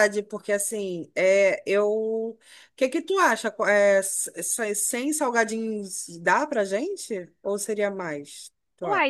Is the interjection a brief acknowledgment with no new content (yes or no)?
no